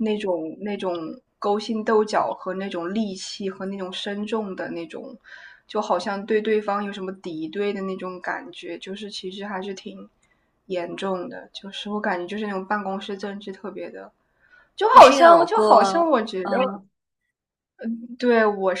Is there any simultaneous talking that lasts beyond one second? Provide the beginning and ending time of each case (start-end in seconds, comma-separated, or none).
14.9-16.6